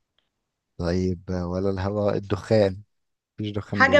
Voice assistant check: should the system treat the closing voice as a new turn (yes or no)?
yes